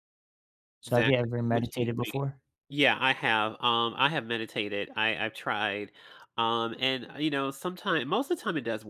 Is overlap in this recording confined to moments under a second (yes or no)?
no